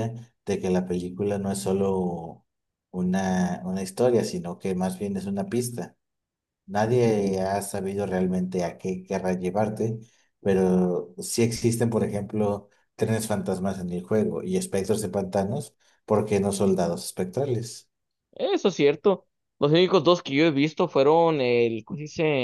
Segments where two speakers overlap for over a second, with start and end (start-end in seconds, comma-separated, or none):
none